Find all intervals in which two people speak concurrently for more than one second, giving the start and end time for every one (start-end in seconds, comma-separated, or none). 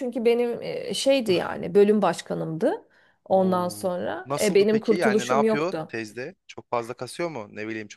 3.3-5.9